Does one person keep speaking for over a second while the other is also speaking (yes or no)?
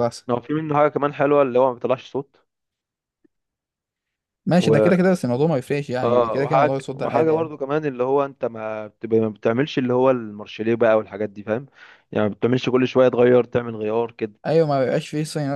yes